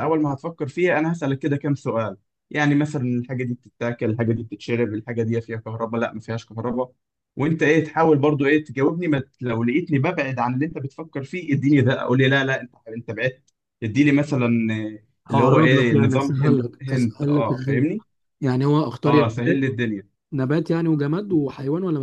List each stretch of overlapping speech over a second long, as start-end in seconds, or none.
15.3-17.9